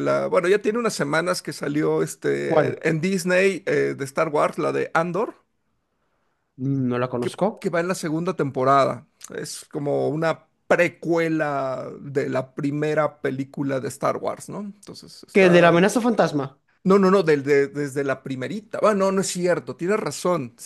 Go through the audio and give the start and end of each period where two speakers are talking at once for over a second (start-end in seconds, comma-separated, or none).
none